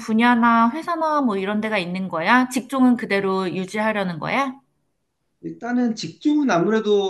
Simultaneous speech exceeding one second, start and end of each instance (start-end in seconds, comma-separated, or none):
none